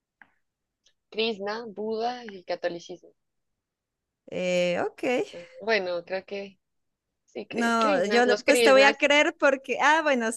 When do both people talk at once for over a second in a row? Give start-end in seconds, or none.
7.5-9.0